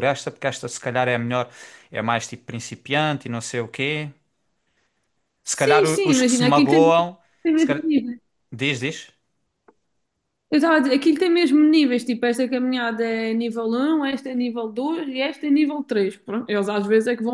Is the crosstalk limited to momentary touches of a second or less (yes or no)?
no